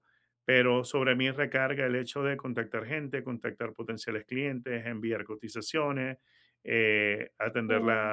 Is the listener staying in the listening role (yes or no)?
yes